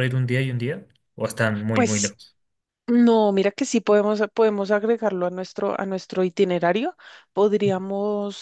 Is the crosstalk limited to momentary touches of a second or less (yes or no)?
yes